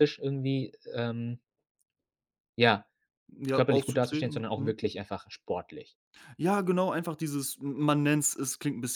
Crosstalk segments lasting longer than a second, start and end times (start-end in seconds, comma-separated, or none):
3.5-4.8